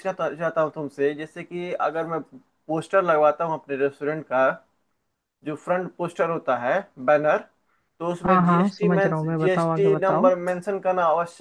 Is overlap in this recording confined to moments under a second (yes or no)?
no